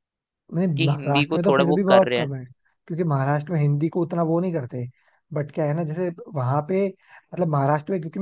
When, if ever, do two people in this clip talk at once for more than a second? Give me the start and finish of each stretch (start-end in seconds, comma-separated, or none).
0.8-2.3